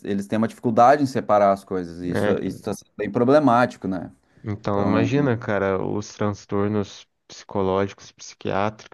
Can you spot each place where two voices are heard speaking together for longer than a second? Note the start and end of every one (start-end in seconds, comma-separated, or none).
none